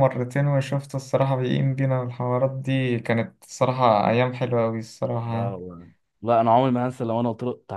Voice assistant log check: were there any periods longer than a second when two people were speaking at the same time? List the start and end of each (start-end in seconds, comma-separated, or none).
none